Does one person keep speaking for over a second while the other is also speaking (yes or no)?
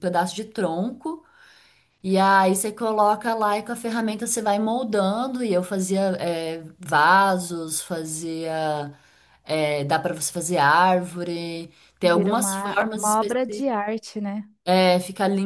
yes